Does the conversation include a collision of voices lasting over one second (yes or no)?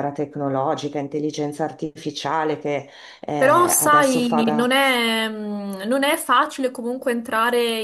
yes